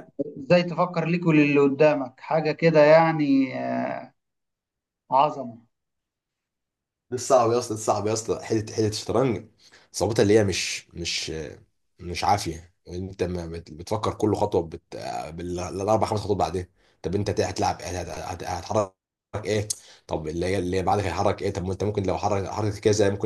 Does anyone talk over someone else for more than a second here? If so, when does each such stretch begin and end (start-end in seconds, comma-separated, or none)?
none